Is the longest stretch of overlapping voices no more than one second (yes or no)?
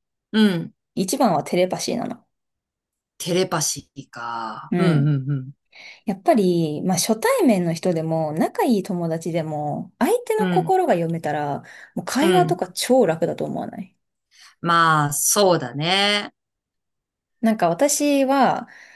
yes